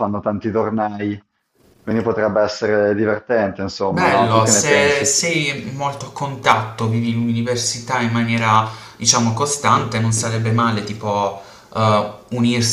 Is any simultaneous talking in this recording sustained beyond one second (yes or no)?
yes